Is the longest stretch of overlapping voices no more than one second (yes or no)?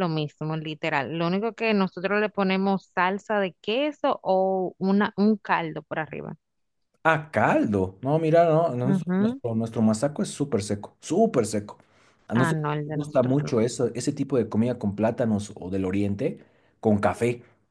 no